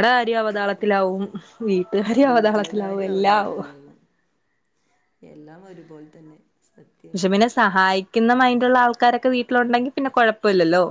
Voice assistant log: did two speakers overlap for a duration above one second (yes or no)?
yes